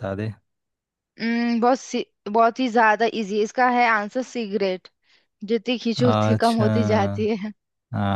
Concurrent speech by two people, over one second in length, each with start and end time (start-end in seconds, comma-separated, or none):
6.0-7.3